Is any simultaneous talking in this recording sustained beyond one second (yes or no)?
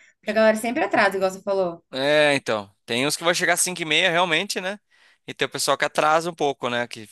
no